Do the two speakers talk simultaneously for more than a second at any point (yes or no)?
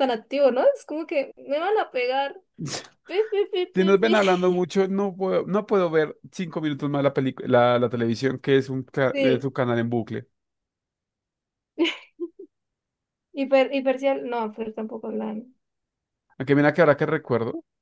no